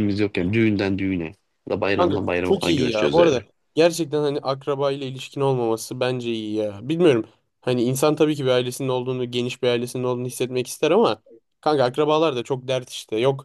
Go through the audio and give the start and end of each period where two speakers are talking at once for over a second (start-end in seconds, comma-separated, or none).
2.0-3.5